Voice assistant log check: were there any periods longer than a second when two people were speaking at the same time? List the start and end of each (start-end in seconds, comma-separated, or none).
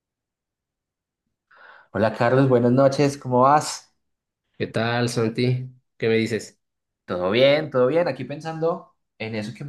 none